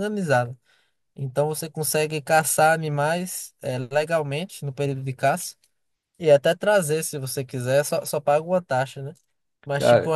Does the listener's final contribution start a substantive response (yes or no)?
no